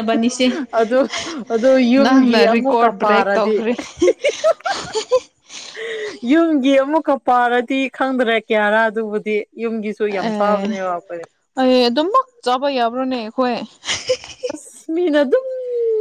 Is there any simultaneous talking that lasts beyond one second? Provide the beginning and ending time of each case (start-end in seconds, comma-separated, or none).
2.0-3.5